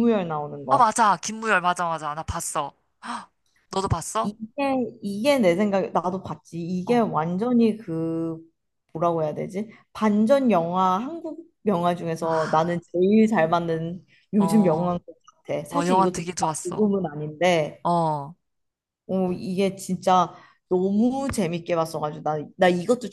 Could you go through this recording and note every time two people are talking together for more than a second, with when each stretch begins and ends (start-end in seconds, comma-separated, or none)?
15.7-16.9